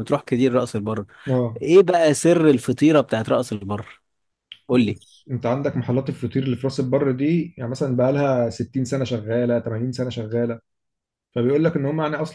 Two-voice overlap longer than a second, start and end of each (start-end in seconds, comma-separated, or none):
none